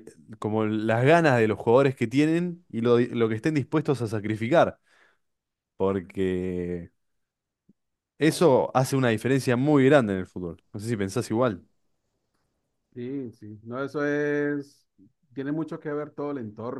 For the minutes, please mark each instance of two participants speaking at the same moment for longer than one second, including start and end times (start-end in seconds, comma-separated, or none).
none